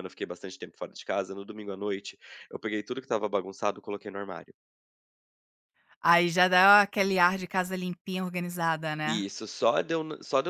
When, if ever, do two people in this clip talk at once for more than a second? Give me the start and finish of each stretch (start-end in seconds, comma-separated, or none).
none